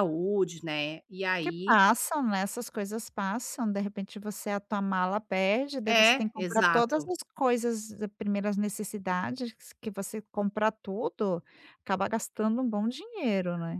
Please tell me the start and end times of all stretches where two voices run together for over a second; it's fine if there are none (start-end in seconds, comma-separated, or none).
5.9-7.1